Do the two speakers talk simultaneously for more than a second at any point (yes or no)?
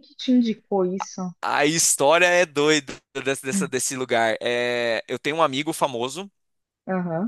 no